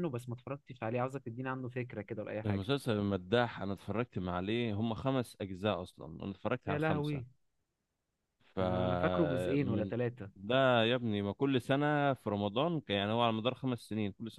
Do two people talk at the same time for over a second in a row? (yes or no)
yes